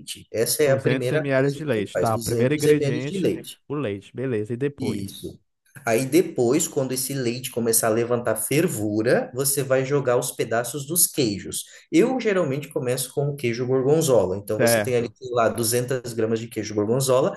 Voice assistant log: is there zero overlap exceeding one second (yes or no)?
no